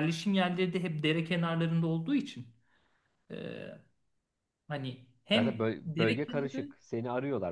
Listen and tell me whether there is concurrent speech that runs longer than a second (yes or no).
yes